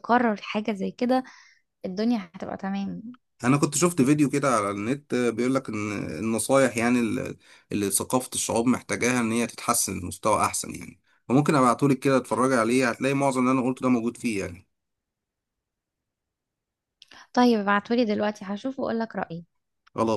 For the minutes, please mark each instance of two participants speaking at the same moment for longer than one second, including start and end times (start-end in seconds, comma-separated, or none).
none